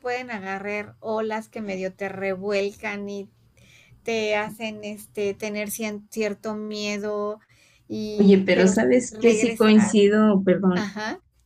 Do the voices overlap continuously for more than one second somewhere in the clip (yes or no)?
yes